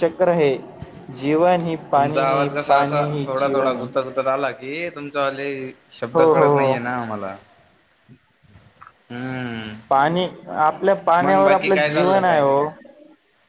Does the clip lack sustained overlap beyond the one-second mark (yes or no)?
no